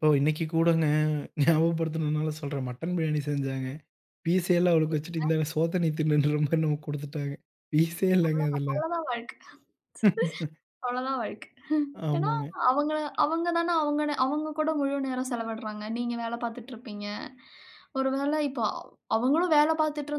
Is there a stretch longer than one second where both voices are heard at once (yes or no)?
no